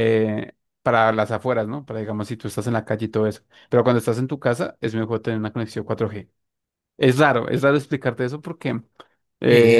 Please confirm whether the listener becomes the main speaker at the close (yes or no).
yes